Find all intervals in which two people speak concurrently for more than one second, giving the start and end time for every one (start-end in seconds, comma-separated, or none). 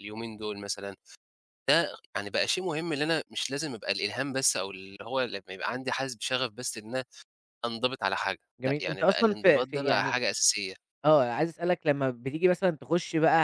8.6-10.2